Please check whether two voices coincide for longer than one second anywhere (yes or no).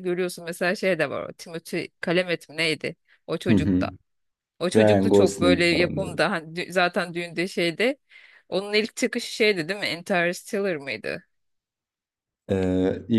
yes